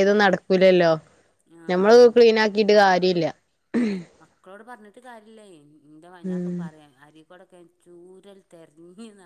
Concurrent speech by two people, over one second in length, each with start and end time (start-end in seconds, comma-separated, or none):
none